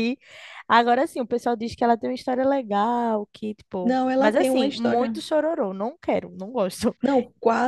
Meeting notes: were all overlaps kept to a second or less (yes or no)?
no